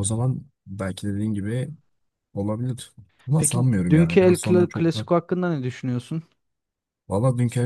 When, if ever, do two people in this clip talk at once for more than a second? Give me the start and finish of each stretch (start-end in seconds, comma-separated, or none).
3.4-5.1